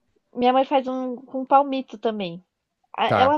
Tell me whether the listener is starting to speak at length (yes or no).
no